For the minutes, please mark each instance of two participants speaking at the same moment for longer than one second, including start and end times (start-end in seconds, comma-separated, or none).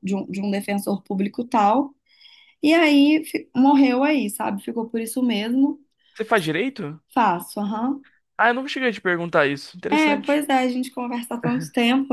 none